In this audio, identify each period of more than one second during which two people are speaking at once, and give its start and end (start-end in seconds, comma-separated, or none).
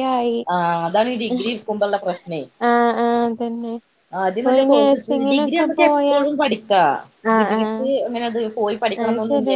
4.4-6.2